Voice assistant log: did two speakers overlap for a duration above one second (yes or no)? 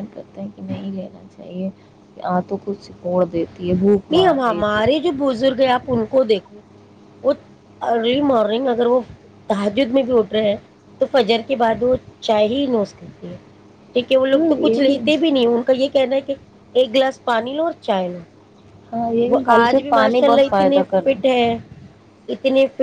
no